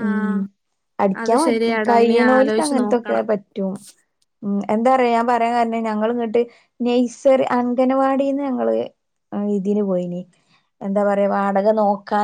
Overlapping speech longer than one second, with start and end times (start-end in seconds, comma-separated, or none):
1.2-3.2